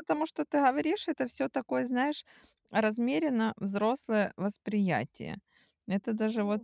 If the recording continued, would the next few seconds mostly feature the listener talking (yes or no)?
no